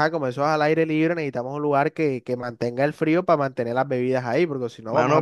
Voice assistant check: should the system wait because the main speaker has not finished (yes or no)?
no